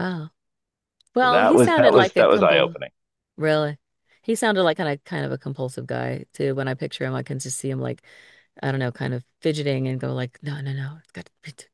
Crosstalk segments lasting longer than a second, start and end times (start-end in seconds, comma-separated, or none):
1.2-2.8